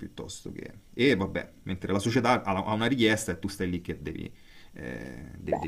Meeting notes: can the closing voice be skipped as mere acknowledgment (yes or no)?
yes